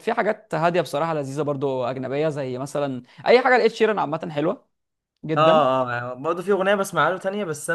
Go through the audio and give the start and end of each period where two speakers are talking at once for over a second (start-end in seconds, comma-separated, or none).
none